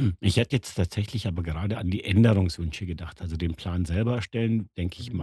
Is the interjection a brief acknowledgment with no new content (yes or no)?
yes